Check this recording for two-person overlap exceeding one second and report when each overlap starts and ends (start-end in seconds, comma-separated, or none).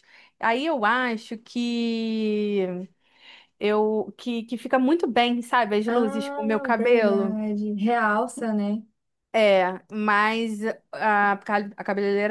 5.9-7.4